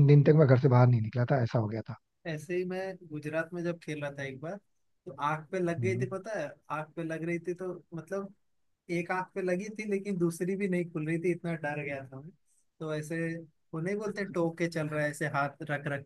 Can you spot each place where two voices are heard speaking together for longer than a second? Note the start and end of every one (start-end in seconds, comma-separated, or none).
none